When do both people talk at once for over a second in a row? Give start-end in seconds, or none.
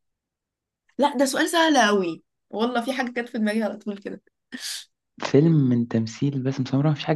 none